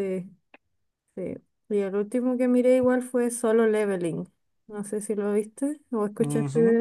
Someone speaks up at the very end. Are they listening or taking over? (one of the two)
taking over